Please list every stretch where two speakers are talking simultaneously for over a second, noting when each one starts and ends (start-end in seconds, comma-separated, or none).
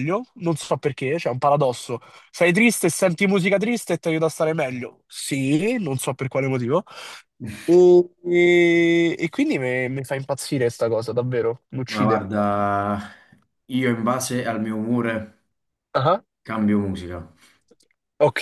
none